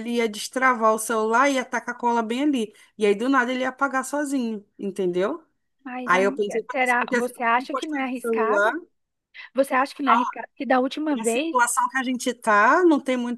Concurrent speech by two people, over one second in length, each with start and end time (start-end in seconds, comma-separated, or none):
6.0-8.7